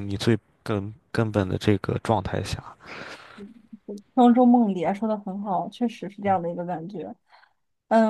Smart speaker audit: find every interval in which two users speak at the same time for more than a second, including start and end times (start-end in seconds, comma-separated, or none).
none